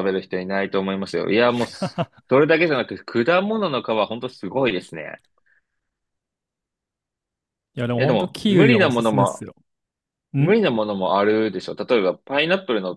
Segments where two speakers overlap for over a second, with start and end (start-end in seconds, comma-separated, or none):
8.0-9.5